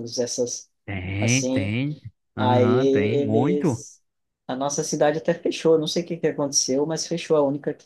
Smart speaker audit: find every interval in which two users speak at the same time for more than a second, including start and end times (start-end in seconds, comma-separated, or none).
2.4-3.8